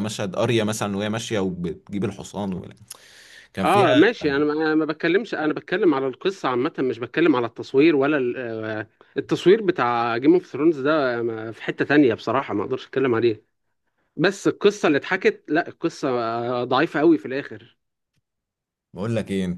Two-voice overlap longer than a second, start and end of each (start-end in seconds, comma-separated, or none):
none